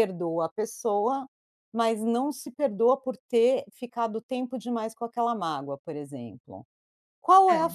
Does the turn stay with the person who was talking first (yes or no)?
yes